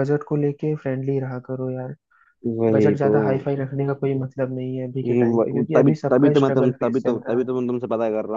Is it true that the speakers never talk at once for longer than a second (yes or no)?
no